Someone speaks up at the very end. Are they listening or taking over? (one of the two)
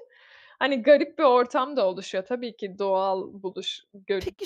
taking over